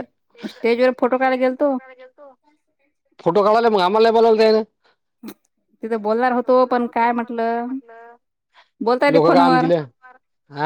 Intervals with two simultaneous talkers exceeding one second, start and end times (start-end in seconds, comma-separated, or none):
none